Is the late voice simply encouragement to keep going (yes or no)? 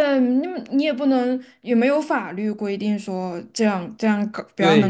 no